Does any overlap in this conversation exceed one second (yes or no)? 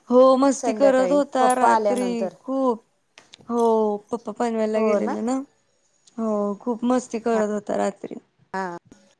yes